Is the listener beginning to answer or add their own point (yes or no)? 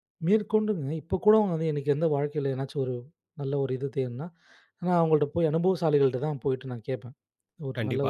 yes